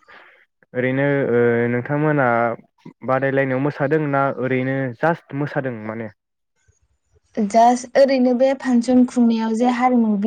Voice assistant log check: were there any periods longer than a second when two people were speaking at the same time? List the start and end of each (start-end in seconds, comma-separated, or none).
none